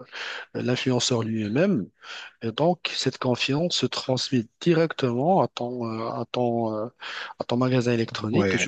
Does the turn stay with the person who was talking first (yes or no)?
yes